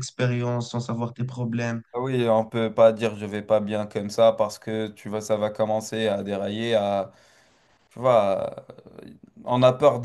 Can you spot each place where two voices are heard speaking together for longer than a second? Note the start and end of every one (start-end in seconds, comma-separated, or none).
none